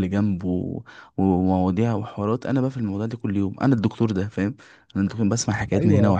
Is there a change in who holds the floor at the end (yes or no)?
no